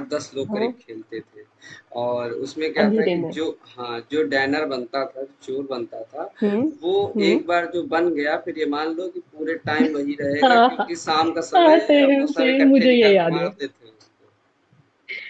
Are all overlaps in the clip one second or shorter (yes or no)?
no